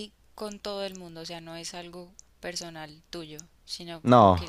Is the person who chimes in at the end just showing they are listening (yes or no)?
yes